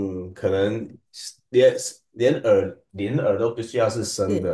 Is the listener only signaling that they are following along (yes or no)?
yes